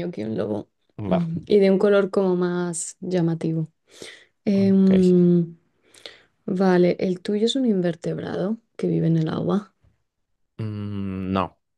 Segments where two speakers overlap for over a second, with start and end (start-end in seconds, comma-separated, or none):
none